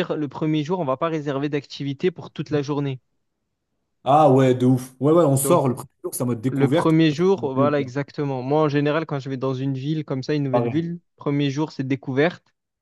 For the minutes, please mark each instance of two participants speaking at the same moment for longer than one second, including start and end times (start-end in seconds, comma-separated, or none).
6.5-7.9